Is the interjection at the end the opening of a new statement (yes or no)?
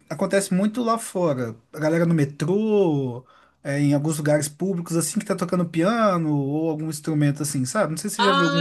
yes